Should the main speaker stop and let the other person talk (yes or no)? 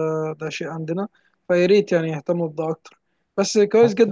no